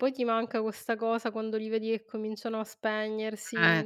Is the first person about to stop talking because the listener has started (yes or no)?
yes